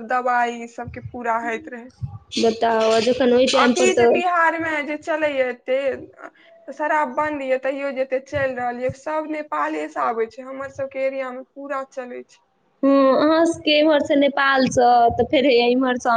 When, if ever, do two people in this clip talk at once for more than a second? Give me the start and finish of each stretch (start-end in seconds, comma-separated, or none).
none